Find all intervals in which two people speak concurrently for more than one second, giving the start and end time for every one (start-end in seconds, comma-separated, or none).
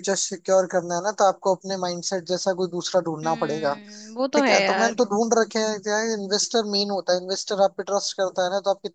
none